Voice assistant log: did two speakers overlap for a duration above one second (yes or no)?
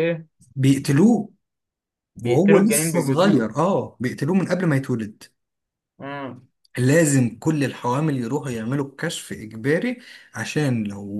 yes